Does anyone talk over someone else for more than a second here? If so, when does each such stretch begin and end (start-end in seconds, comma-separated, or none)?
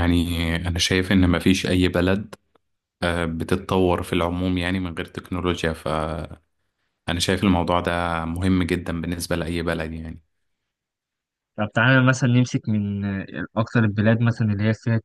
none